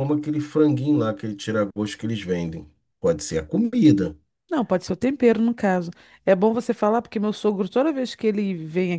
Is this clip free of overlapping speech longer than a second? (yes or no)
yes